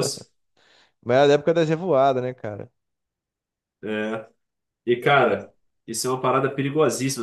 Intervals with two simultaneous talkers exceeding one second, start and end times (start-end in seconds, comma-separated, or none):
none